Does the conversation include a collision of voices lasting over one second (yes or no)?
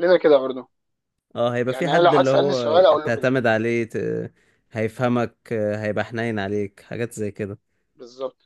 yes